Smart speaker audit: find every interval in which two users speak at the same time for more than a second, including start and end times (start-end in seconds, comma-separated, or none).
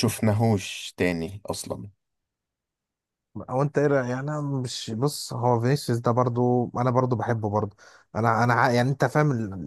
none